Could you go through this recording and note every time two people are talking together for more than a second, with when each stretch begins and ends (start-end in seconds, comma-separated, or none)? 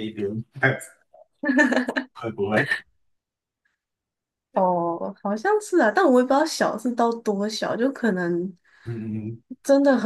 none